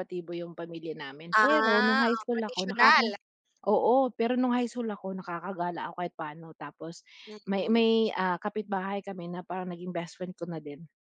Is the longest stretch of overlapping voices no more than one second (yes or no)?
no